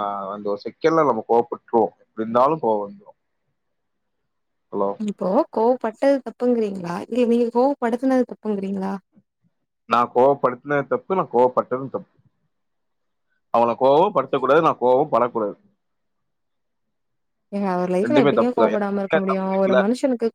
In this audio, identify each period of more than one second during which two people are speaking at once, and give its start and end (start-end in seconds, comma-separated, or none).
18.1-19.8